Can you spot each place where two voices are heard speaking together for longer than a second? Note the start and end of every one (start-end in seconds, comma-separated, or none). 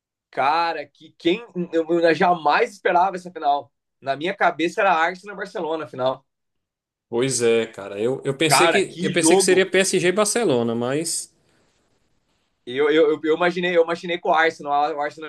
8.5-9.7